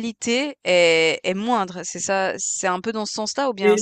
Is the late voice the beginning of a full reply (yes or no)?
yes